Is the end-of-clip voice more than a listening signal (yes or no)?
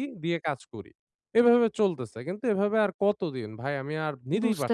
yes